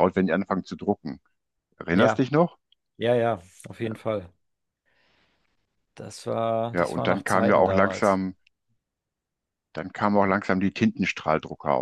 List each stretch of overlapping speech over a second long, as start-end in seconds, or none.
6.7-8.2